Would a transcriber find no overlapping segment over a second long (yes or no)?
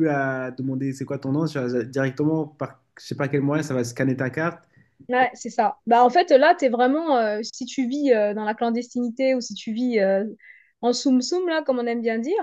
yes